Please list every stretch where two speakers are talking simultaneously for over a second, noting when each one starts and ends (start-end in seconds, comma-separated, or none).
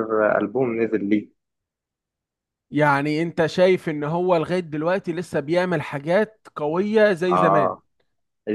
none